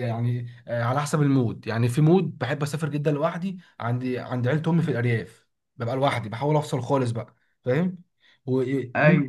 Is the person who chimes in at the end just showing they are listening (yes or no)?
yes